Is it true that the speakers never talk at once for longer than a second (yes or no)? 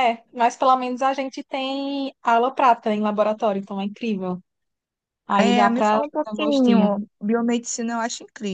no